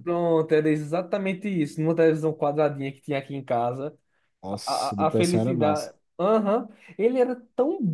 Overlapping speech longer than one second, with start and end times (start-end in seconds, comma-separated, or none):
4.7-5.9